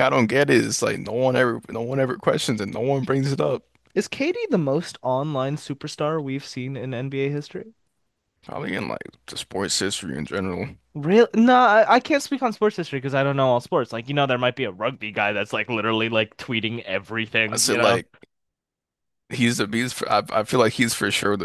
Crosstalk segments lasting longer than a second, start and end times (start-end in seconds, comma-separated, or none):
none